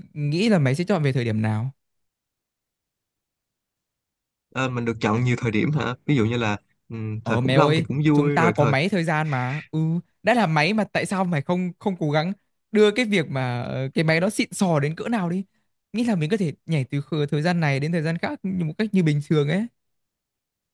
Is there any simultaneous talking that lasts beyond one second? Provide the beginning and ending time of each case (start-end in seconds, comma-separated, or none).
7.2-8.7